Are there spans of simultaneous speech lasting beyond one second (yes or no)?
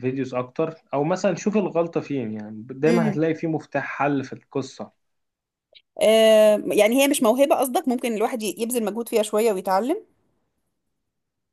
no